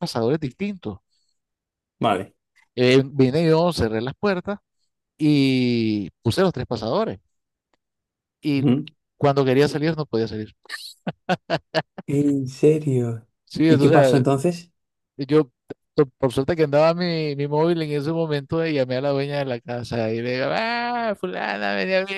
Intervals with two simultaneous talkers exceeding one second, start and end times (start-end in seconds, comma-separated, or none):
none